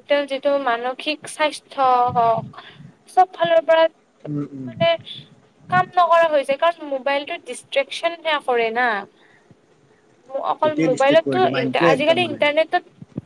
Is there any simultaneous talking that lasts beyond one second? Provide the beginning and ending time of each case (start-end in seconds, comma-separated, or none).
10.6-12.4